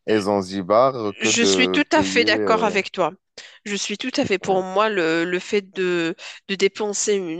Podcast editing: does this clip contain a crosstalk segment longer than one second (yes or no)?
yes